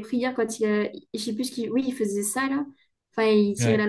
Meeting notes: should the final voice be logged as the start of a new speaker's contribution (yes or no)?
no